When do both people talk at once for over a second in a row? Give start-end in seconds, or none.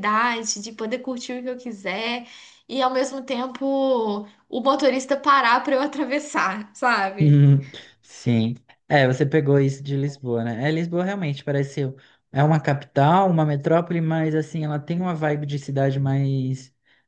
none